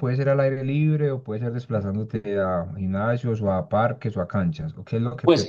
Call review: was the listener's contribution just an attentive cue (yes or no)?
no